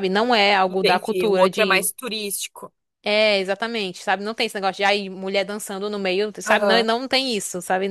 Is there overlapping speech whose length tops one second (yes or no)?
yes